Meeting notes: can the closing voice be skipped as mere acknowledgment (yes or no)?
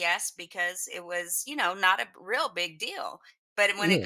yes